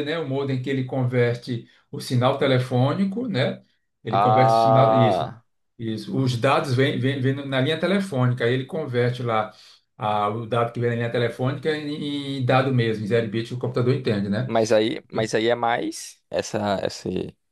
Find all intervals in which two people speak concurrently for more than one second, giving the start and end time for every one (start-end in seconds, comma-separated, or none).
4.1-5.3